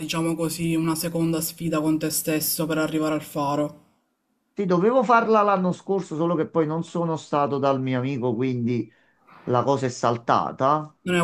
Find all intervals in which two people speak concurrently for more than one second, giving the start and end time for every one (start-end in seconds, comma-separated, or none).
none